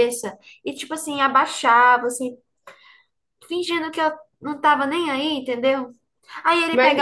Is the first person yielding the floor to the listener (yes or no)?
no